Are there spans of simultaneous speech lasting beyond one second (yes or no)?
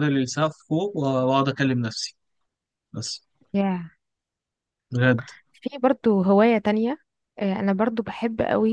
no